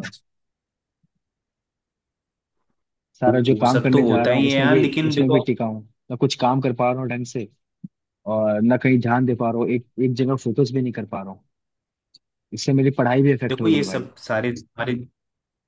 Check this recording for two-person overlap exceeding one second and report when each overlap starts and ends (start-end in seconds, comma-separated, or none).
3.3-5.4